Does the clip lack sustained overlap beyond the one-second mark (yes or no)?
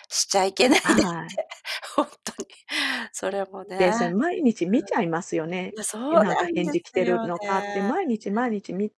no